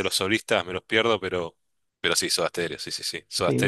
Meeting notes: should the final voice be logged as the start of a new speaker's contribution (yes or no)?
yes